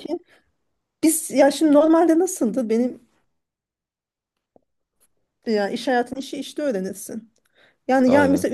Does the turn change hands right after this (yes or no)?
no